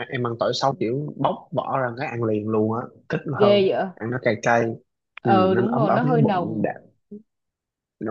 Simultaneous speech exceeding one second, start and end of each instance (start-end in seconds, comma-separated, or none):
5.2-6.8